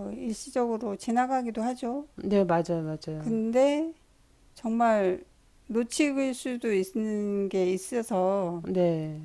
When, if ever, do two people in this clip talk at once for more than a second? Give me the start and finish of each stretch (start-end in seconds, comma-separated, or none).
none